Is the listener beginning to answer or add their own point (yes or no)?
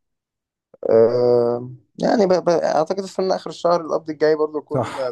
yes